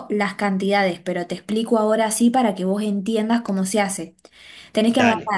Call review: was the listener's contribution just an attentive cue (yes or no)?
yes